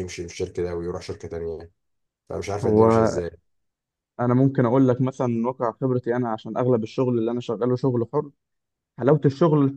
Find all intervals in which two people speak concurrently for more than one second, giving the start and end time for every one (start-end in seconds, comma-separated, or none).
none